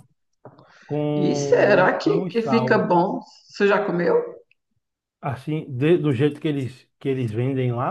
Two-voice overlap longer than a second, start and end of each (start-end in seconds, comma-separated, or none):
1.1-2.8